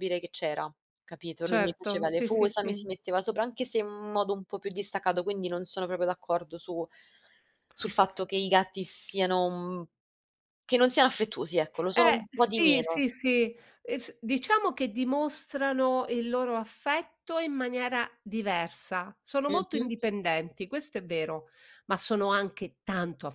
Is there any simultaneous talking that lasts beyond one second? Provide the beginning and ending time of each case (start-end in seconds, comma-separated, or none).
1.4-2.9, 11.8-13.1